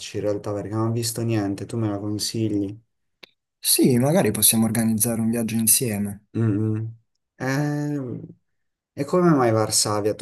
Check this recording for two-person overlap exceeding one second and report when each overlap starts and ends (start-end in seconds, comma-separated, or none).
none